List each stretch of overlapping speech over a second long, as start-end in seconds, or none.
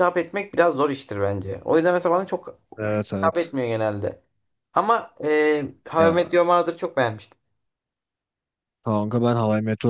none